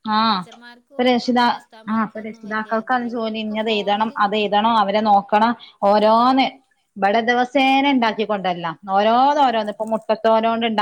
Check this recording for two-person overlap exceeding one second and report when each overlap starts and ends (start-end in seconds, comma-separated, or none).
1.9-4.4